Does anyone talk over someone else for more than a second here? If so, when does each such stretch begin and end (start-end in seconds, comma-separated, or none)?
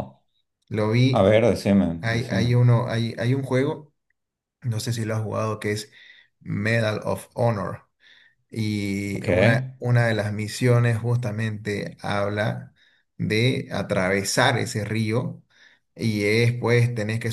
none